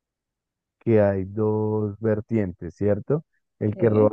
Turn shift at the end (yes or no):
no